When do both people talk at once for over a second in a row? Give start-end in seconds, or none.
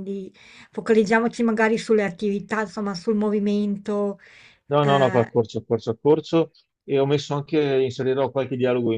none